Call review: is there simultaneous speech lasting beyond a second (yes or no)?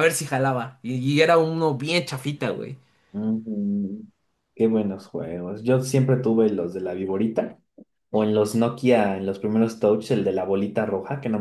no